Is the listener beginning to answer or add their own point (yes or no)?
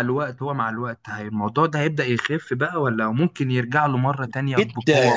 yes